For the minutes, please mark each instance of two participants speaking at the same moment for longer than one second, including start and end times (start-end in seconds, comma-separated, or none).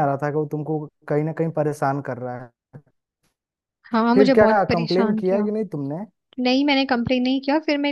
4.1-5.5